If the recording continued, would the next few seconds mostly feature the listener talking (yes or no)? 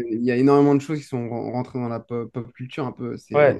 yes